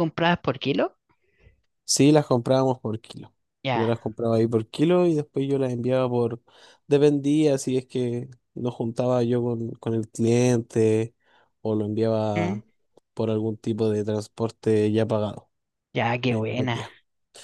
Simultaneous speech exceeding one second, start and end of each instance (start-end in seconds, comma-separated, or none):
none